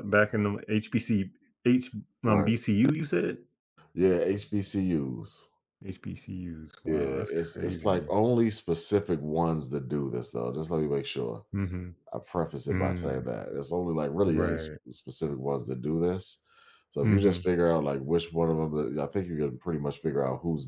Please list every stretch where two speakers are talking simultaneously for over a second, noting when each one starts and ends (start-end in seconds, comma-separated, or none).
6.8-8.1